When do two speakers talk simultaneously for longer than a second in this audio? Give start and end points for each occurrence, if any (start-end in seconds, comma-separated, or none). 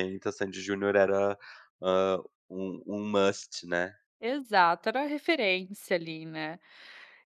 none